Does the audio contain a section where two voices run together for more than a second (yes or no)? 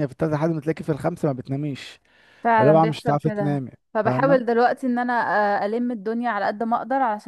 yes